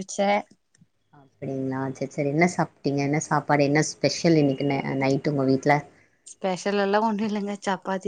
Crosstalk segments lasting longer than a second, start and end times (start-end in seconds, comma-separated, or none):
none